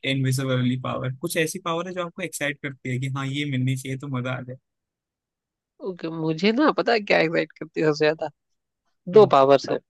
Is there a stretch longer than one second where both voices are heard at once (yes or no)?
no